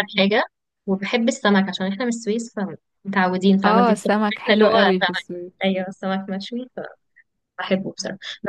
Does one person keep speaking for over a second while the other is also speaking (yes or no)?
yes